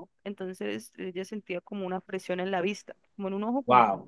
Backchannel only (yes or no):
no